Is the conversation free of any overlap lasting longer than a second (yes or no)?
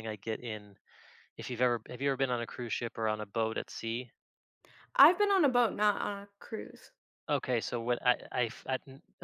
yes